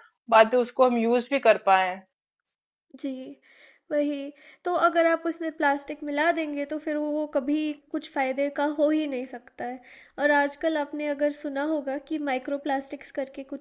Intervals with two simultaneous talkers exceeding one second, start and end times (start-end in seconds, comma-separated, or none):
none